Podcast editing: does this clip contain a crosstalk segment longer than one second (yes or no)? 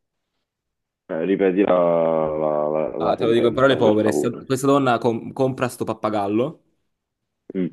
yes